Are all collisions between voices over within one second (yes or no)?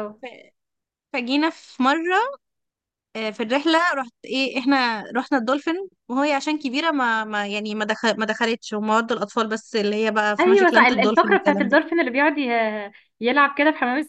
no